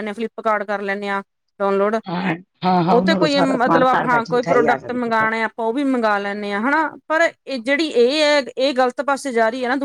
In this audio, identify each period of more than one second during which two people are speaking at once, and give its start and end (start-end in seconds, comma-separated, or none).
2.9-5.3